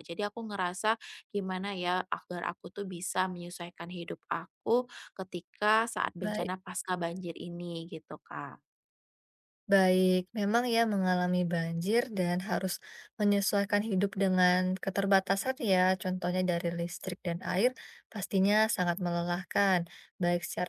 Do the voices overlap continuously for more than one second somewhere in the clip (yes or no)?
no